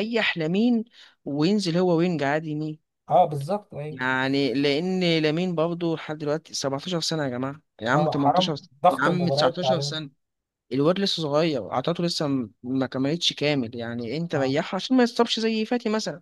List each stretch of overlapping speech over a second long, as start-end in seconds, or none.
7.9-9.9